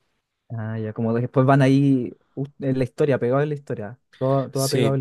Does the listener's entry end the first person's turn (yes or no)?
yes